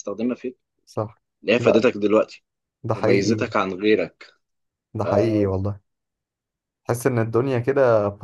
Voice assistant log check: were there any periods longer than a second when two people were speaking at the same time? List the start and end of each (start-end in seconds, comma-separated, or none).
none